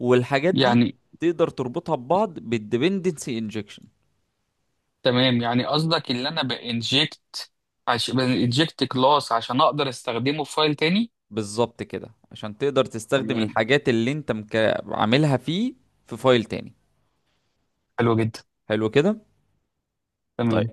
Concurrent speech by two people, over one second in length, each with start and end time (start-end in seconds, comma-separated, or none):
none